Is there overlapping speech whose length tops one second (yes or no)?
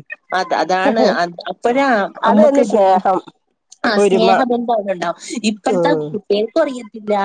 no